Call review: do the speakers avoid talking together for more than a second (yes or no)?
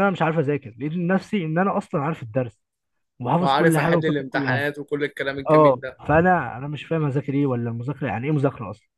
no